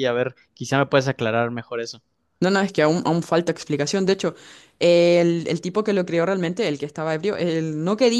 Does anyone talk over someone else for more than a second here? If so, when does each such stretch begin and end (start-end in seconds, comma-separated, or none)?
none